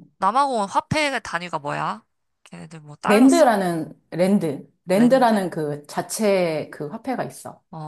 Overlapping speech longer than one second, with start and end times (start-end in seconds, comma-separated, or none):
none